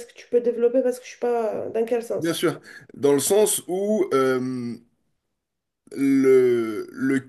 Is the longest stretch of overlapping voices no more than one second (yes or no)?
yes